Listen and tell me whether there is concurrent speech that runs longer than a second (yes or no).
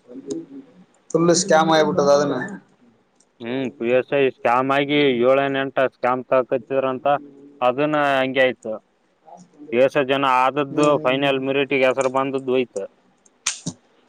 no